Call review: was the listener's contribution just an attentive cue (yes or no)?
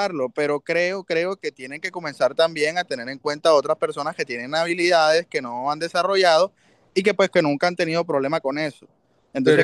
no